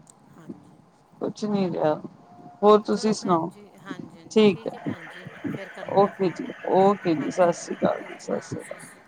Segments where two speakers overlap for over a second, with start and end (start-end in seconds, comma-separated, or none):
7.2-8.5